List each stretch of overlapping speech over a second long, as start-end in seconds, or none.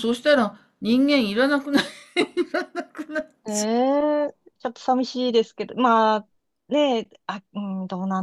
none